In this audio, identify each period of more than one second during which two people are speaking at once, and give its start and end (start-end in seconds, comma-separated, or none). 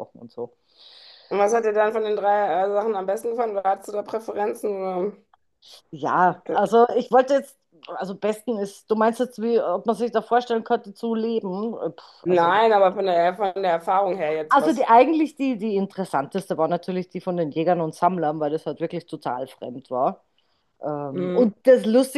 none